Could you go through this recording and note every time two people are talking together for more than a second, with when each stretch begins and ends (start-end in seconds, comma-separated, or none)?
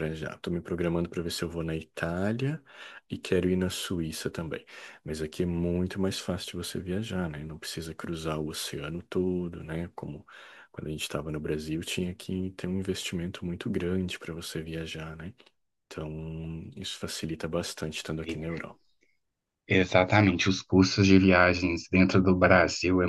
none